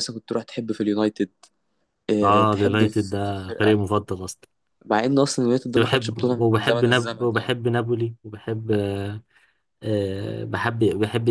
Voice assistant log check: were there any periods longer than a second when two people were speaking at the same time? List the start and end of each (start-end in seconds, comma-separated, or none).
2.2-3.8, 5.8-7.5